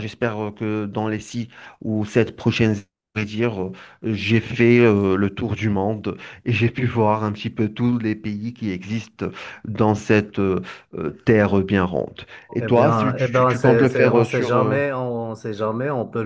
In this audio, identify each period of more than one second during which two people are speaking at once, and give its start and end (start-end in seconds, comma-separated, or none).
12.6-14.8